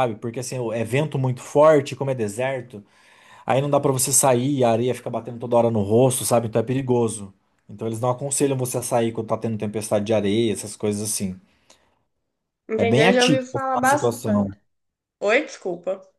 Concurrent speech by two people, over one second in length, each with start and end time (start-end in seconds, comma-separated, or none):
12.8-14.5